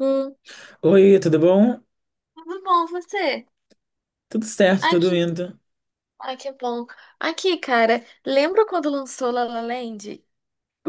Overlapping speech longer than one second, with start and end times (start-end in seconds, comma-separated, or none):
none